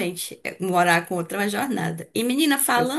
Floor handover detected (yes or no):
no